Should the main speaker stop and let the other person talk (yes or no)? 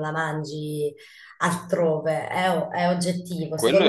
no